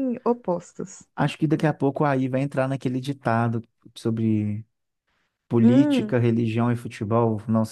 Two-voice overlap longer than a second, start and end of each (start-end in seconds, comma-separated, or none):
none